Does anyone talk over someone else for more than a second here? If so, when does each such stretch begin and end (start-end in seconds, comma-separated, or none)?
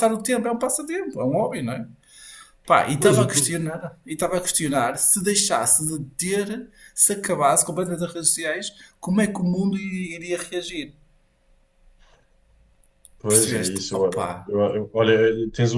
13.3-14.5